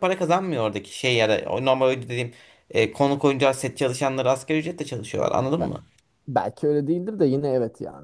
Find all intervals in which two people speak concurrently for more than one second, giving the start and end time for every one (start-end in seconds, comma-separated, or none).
none